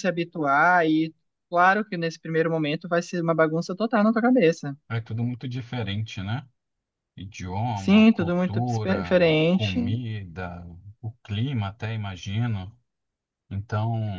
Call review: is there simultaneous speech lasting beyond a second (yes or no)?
yes